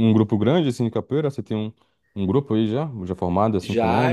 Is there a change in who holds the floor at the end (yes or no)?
yes